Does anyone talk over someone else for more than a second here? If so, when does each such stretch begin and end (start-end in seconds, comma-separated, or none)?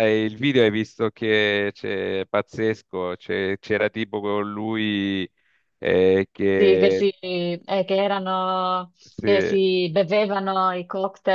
none